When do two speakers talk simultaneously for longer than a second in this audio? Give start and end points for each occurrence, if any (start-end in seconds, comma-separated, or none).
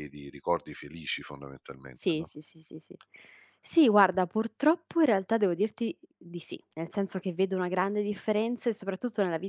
none